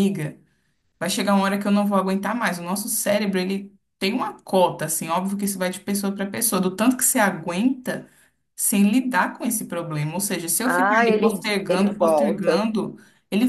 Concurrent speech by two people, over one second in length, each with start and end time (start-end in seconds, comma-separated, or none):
10.6-12.7